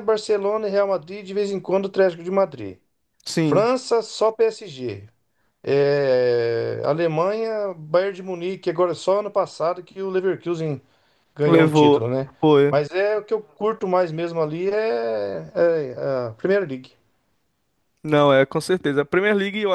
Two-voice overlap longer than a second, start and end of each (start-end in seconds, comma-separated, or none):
none